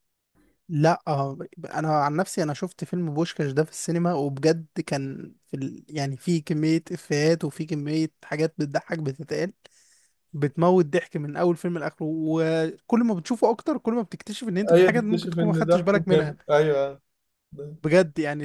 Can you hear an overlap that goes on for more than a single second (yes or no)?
yes